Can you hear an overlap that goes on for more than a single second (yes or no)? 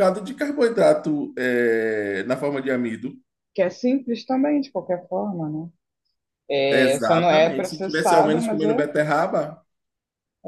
yes